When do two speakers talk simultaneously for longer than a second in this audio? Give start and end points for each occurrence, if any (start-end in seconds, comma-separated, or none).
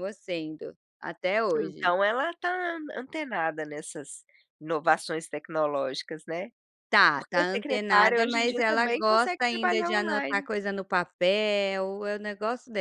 7.1-10.5